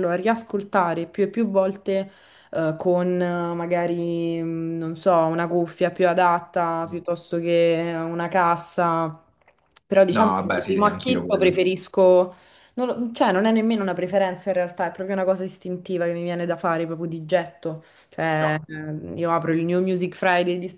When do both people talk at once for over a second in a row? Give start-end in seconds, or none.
10.1-11.6